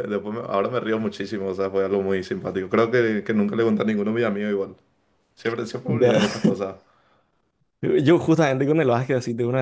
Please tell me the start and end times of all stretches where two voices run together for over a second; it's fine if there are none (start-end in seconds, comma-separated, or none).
none